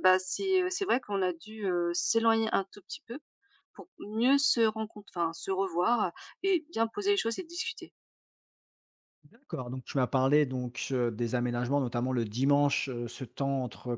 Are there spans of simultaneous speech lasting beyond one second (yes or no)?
no